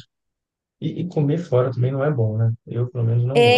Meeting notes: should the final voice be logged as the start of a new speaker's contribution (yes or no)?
yes